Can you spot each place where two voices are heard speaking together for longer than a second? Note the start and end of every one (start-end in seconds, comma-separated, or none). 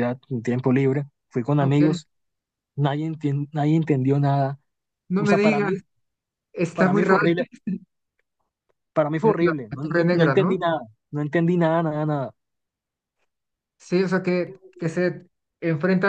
9.2-10.6